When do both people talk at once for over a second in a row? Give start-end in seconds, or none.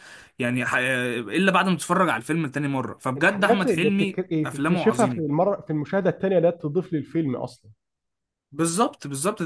3.2-5.4